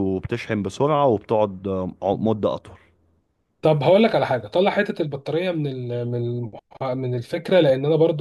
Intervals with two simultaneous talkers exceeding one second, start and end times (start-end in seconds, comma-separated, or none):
none